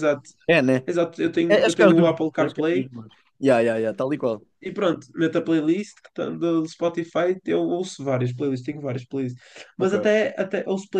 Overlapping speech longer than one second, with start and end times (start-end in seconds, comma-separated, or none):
1.5-2.9